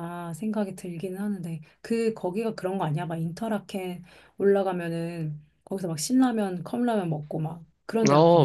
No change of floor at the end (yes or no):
no